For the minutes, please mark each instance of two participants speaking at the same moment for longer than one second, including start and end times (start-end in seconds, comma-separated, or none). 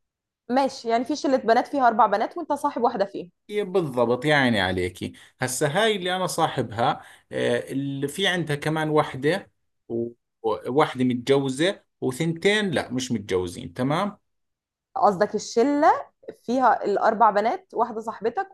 none